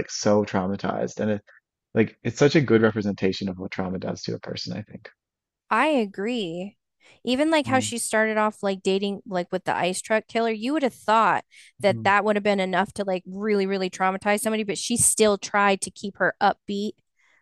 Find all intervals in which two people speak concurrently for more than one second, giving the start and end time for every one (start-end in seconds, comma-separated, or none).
none